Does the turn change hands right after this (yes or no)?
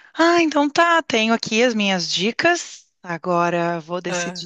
no